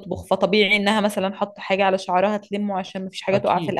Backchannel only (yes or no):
yes